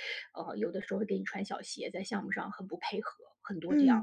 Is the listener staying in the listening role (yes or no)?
no